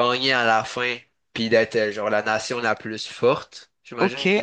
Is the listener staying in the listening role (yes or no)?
no